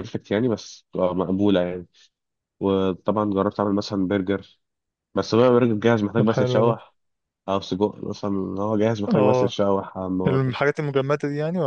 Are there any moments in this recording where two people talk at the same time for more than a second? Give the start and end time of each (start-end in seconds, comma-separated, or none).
none